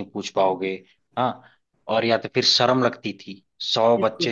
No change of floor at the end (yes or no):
yes